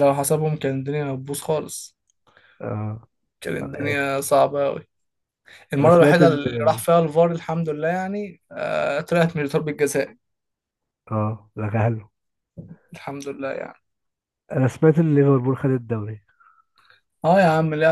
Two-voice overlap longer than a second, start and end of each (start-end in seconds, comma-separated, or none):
none